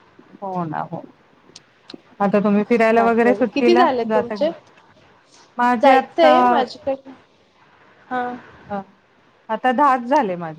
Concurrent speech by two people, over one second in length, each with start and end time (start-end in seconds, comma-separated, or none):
3.0-4.5